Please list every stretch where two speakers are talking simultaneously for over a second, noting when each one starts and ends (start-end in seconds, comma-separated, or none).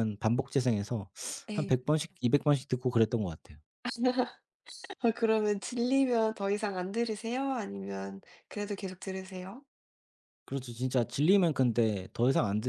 none